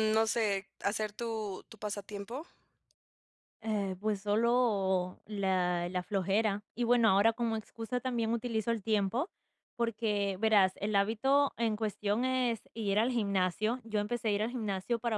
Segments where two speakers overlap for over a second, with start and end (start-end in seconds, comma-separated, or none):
none